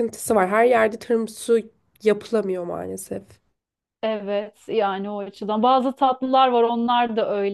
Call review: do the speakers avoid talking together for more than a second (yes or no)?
yes